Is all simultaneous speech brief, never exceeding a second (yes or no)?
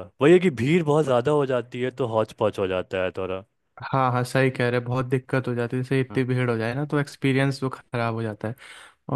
yes